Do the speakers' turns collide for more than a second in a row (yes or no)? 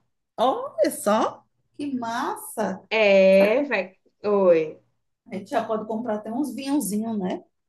no